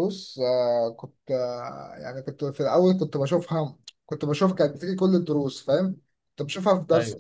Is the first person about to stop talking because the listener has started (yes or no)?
no